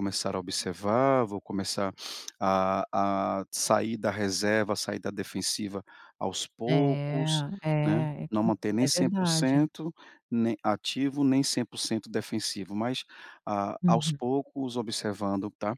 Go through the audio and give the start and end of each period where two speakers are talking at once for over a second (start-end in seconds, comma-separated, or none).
7.8-9.7